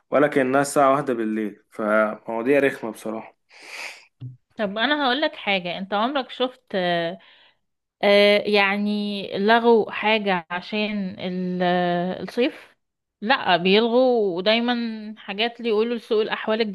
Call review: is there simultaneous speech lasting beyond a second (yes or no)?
no